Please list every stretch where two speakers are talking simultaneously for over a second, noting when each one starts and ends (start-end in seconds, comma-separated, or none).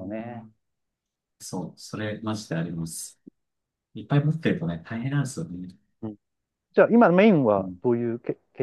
none